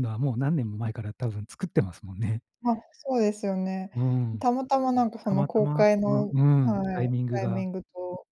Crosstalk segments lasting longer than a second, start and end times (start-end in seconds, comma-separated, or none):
5.3-7.6